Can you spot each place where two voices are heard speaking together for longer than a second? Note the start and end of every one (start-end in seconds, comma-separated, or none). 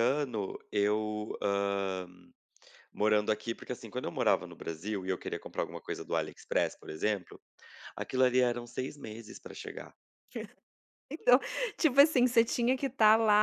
none